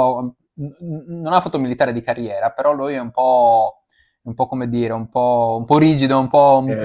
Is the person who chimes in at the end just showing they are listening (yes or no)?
yes